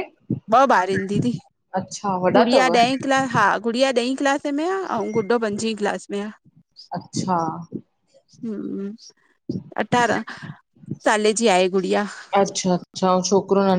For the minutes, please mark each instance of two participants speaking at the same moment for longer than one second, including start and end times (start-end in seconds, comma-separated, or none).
none